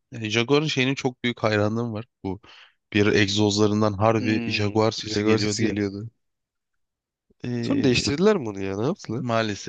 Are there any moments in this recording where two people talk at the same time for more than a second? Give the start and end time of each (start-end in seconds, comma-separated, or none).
4.2-5.8